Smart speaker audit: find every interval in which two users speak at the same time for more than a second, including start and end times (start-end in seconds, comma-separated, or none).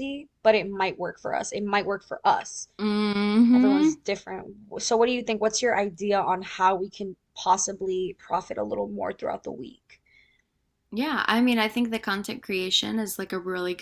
none